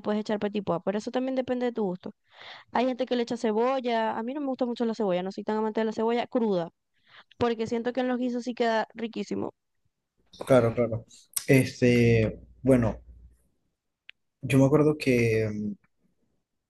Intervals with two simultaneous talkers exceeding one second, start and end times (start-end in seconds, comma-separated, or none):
none